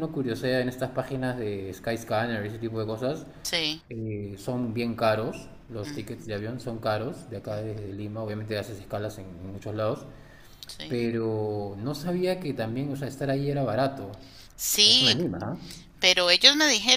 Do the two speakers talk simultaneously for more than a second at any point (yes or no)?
no